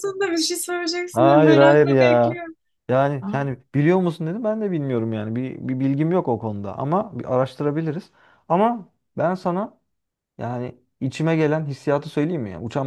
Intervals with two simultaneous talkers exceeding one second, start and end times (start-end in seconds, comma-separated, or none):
1.1-2.4